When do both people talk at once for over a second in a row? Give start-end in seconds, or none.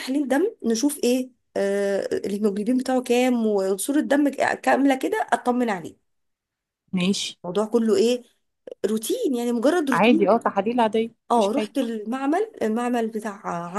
none